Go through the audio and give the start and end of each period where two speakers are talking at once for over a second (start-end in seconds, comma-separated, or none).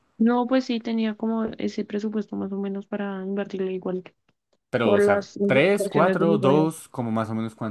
4.8-6.7